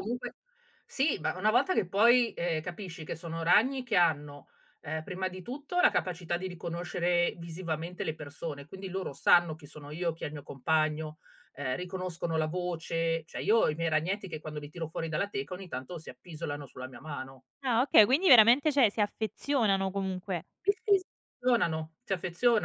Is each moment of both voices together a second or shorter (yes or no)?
yes